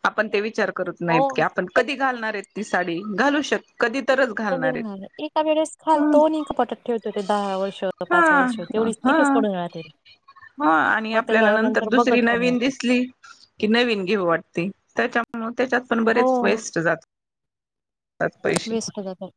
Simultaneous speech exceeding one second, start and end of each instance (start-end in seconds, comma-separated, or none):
none